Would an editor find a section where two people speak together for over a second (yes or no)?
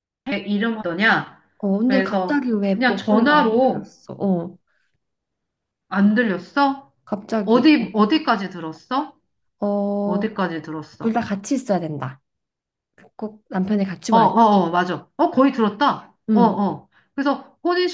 yes